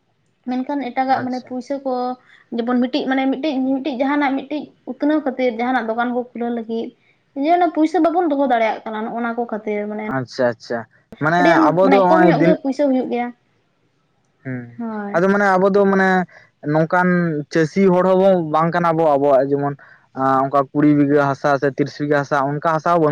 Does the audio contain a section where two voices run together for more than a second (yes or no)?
no